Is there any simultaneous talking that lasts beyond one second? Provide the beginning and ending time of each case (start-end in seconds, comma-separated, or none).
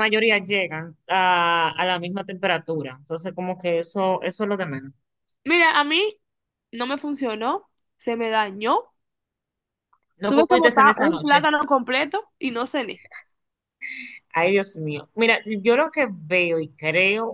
10.3-11.5